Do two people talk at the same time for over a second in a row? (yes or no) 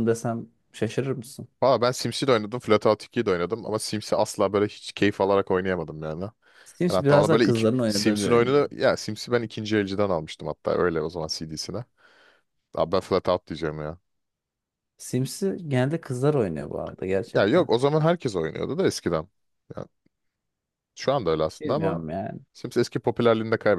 yes